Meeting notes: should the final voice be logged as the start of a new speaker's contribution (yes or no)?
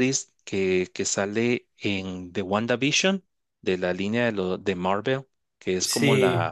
no